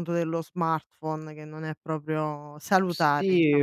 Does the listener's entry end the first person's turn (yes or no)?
yes